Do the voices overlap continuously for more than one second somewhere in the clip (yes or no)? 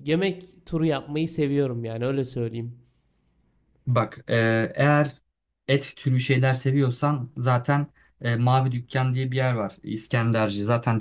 no